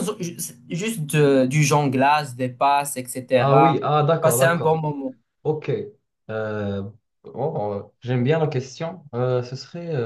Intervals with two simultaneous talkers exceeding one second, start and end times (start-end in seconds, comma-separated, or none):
3.4-4.8